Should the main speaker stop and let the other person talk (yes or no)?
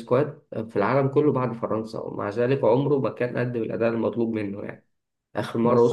no